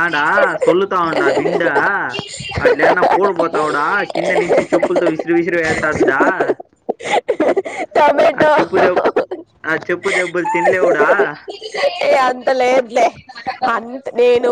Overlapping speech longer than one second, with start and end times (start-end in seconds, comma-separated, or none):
none